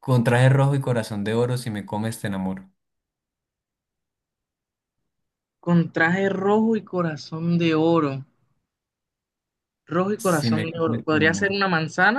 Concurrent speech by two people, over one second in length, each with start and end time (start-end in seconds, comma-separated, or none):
10.2-11.5